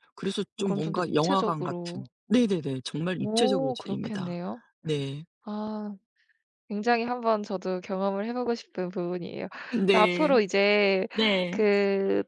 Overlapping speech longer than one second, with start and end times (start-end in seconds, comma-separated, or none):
0.6-2.0, 3.2-4.4